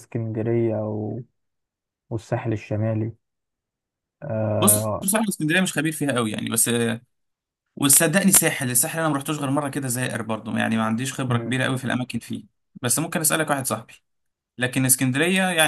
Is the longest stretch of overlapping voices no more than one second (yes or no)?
yes